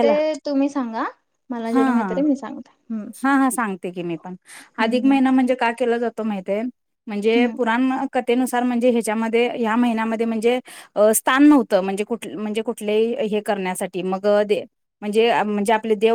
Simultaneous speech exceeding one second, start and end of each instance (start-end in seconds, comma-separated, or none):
none